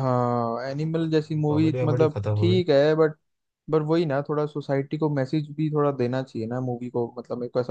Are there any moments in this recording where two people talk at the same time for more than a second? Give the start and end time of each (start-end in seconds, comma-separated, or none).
0.7-2.6